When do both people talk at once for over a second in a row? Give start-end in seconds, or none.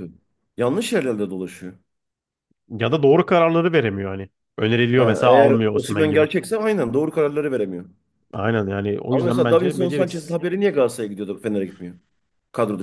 5.0-6.2, 9.1-10.4